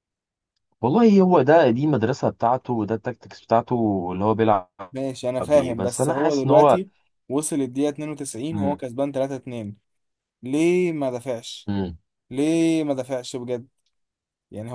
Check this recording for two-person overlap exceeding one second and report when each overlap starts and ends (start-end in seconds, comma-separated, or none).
5.4-6.8